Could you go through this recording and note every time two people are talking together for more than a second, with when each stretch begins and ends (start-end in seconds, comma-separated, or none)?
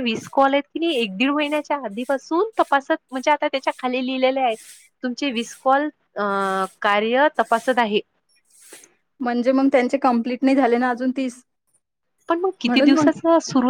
none